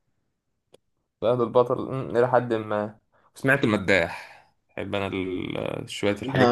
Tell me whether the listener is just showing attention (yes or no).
no